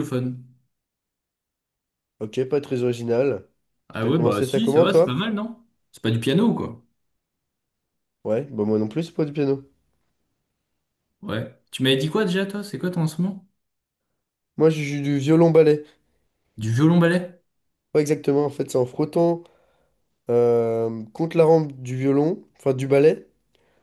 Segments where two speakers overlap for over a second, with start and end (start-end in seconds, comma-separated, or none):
4.0-5.2